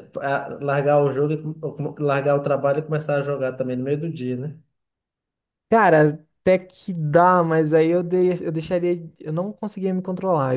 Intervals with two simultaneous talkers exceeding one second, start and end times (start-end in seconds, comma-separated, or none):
none